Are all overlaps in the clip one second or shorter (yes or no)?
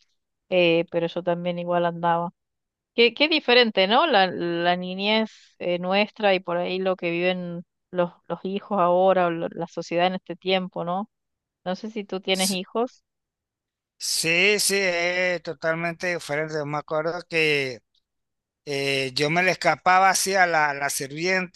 yes